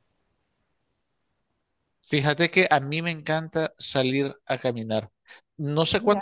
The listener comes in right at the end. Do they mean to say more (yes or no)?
no